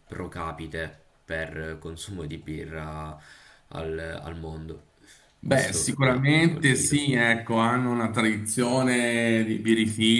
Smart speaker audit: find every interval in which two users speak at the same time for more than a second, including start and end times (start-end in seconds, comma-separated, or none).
5.4-7.1